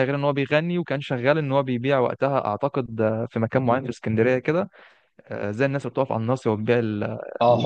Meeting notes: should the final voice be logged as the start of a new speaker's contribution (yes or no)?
yes